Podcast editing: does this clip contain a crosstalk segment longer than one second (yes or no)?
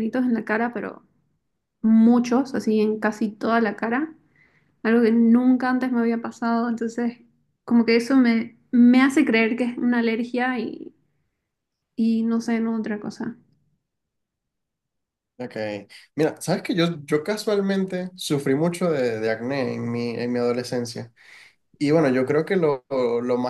no